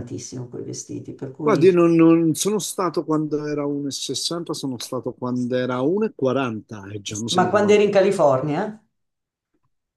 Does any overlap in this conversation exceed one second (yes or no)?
no